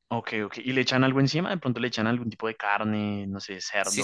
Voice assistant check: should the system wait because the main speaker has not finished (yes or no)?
no